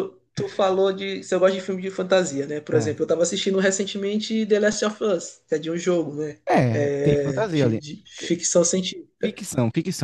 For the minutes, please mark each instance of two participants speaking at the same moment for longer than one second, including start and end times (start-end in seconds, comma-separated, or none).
6.5-8.4